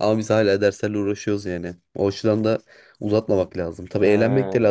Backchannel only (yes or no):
yes